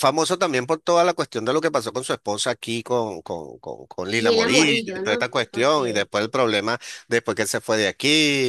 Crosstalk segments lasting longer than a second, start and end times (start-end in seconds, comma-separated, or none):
4.2-5.8